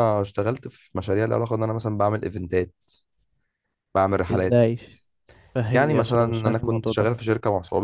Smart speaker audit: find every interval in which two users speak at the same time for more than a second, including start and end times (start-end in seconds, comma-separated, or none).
5.7-7.1